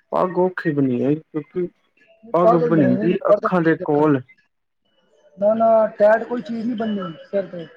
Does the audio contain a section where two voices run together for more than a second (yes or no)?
yes